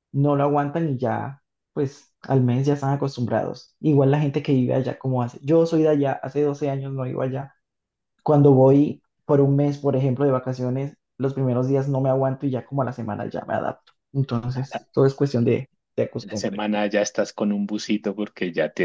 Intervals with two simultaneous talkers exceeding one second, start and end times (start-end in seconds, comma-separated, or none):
none